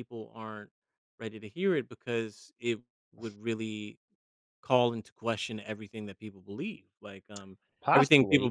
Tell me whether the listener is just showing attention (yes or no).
yes